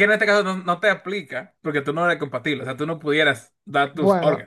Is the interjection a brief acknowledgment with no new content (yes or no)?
no